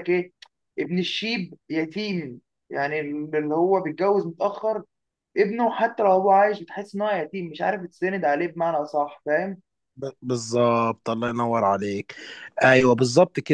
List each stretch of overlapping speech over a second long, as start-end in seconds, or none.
none